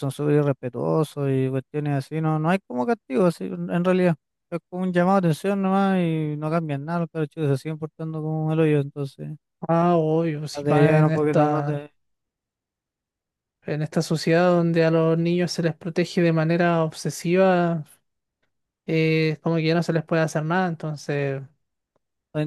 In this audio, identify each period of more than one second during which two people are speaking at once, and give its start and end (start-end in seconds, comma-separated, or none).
10.6-11.8